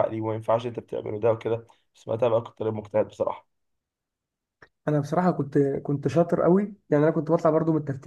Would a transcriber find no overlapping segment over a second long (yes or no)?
yes